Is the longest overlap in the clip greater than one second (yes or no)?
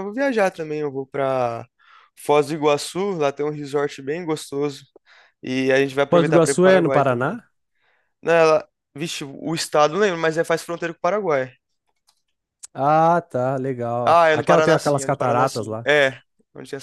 yes